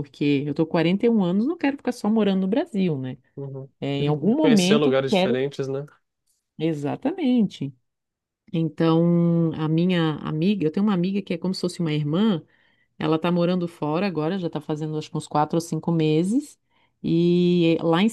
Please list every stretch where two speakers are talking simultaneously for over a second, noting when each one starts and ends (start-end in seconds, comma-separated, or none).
3.8-5.4